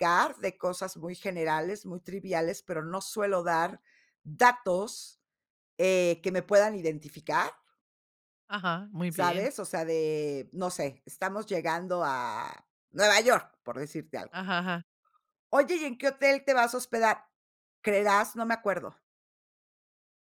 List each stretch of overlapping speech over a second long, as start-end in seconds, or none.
none